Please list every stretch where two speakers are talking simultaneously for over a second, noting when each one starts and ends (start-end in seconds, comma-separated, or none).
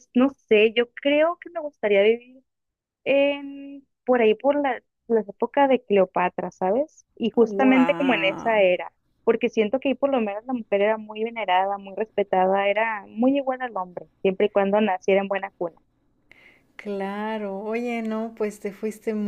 7.4-8.7